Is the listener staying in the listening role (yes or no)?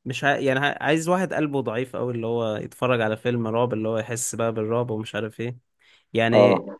yes